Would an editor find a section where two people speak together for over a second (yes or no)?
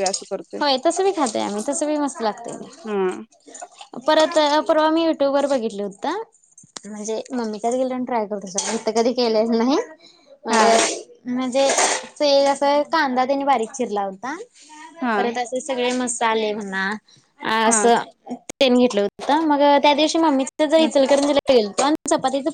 no